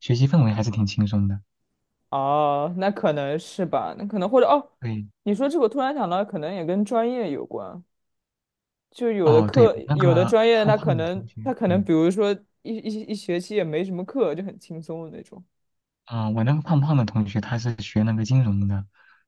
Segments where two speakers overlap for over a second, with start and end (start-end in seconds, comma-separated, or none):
9.2-11.8